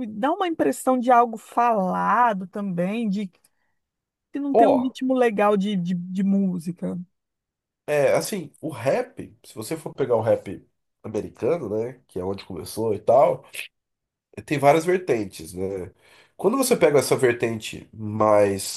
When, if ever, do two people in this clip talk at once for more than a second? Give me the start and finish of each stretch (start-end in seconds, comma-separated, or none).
none